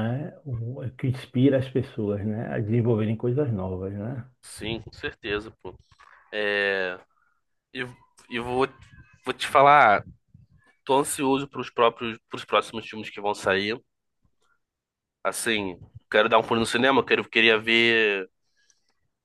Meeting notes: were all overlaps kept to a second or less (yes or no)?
yes